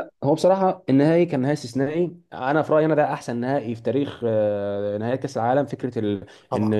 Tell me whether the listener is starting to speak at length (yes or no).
no